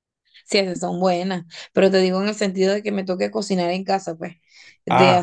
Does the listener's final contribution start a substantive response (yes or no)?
no